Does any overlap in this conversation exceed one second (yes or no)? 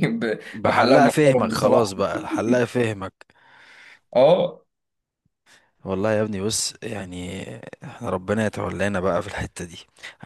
yes